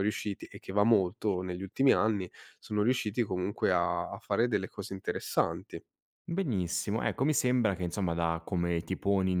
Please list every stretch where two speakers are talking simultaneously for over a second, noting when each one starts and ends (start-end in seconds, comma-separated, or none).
none